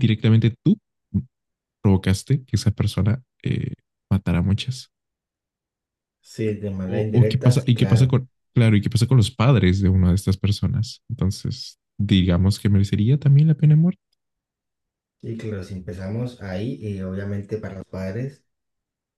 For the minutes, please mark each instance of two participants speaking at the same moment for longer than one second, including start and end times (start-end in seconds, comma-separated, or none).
6.9-8.2